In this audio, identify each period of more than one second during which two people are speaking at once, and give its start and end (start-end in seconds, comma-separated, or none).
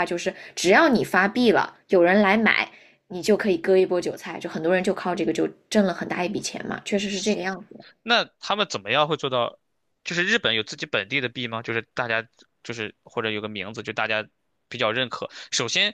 none